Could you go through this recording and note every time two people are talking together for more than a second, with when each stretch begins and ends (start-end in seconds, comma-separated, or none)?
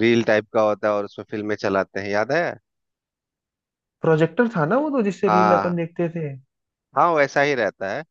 none